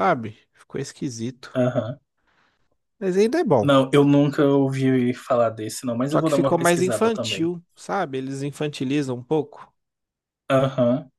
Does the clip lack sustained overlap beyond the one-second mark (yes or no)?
no